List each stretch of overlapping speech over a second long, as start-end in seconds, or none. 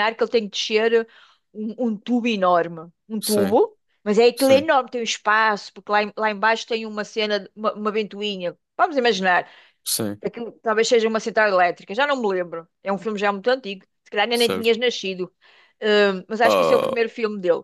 none